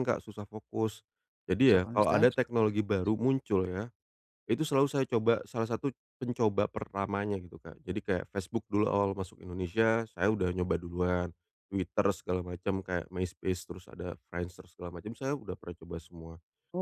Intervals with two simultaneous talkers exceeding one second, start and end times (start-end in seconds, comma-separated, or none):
1.6-3.1